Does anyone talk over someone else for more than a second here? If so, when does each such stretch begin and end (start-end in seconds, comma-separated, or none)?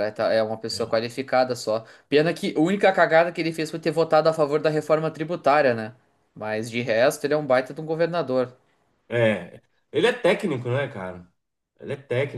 none